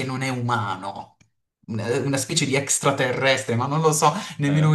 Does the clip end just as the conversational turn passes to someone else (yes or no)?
no